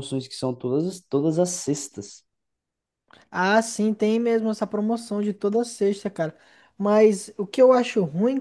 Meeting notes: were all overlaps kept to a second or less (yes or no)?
yes